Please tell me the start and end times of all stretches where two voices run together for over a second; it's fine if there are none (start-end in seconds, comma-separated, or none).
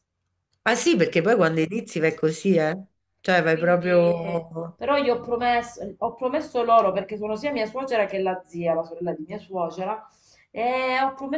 3.4-4.8